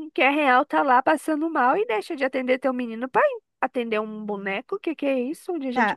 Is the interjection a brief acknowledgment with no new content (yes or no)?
no